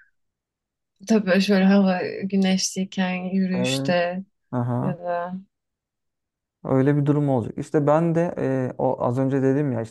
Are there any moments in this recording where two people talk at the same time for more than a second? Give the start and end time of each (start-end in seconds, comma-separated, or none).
none